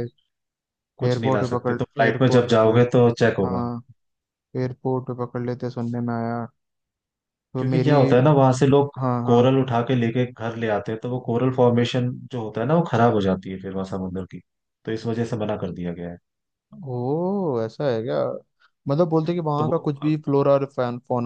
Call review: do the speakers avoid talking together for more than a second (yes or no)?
no